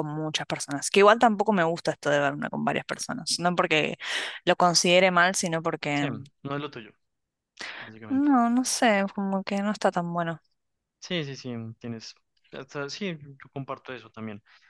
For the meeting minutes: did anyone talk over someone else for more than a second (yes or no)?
no